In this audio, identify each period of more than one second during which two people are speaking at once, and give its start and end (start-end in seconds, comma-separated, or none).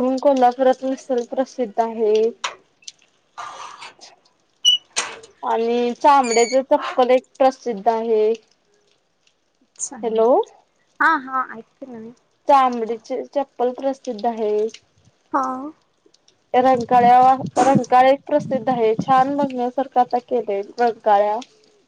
none